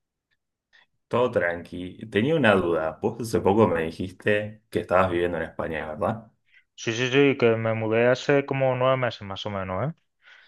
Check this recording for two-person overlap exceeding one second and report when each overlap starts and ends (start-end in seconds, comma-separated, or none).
none